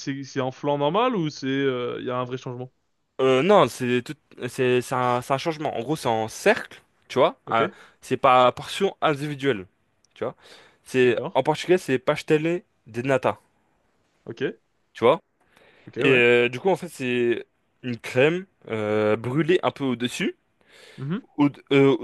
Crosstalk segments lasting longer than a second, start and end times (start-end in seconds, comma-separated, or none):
none